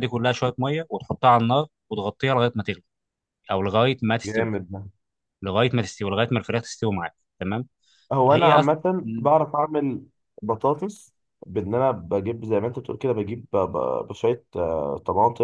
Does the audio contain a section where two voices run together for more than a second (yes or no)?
no